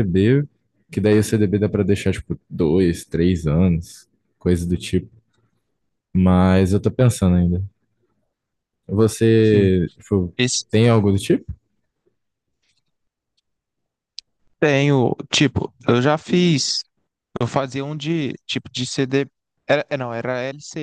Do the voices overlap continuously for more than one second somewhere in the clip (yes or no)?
no